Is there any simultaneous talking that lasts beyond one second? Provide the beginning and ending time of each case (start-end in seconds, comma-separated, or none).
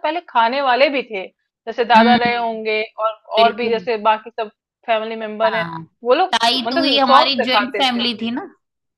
6.7-8.1